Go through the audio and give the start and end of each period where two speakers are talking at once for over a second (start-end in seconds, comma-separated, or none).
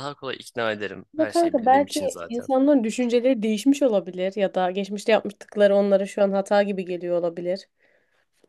1.1-2.5